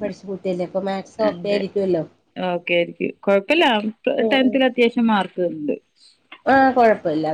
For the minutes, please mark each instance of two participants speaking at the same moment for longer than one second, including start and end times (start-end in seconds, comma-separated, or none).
none